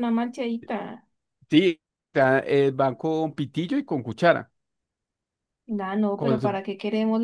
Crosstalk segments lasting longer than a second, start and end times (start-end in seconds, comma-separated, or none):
none